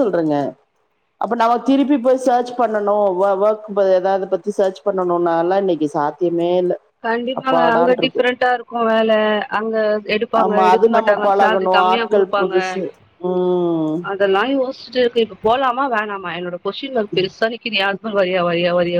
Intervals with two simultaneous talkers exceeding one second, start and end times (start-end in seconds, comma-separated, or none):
10.4-12.5